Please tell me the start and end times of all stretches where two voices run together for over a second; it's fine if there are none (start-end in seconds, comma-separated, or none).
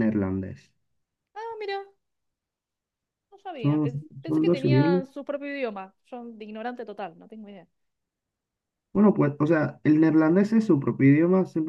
3.6-5.0